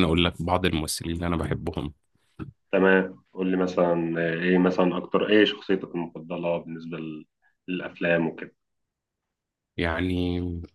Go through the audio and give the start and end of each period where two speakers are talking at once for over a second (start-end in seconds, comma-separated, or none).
none